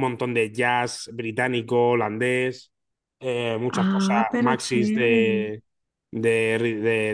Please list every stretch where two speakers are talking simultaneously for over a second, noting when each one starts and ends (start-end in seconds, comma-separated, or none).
3.7-5.2